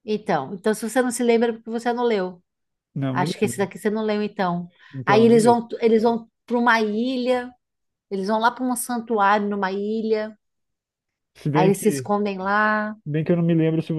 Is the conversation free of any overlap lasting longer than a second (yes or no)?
yes